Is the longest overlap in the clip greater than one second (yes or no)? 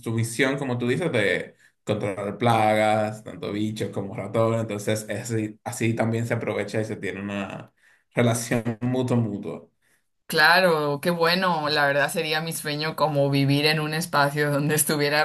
no